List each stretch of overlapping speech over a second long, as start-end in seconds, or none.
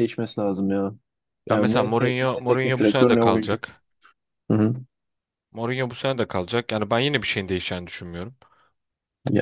1.5-3.6